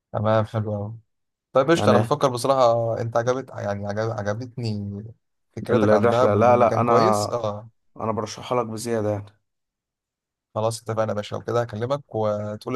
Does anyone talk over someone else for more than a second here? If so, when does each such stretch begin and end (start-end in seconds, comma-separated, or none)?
5.7-7.3